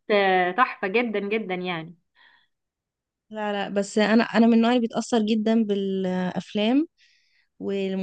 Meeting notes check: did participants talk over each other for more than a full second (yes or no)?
no